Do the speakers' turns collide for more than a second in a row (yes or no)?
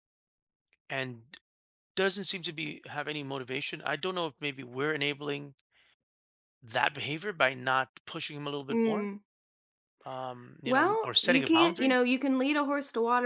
yes